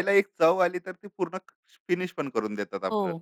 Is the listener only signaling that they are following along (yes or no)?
no